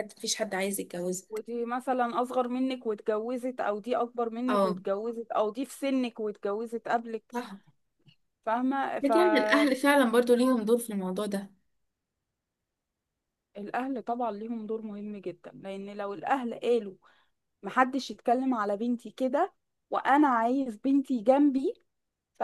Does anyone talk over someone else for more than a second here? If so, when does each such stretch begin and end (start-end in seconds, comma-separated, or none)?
none